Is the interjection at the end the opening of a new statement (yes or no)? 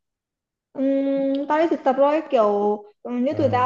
no